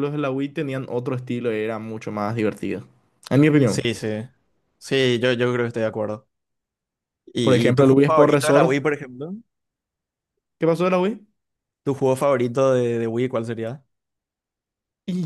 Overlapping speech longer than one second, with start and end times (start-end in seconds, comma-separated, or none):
7.4-8.8